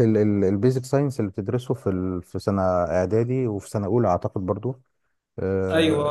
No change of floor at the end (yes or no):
yes